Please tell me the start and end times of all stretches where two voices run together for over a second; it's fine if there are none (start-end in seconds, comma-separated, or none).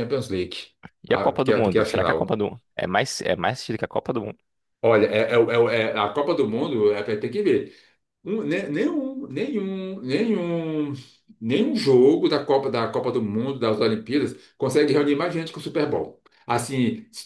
1.1-2.3